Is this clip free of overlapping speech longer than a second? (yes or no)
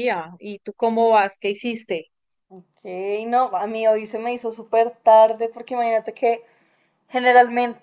yes